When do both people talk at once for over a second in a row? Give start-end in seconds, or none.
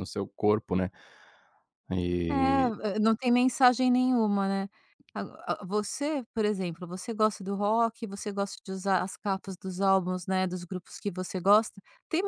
none